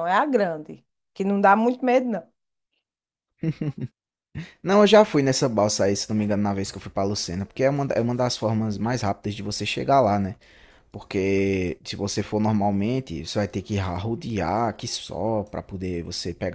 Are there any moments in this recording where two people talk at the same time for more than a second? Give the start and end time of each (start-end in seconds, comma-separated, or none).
none